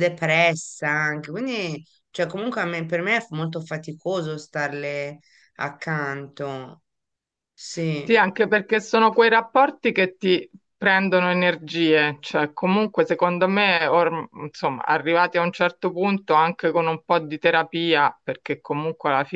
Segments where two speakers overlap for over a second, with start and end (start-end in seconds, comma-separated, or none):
none